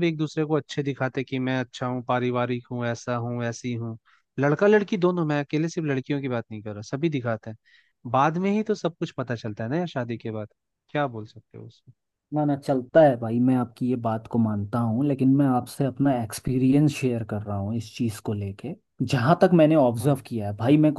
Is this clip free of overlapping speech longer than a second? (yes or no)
yes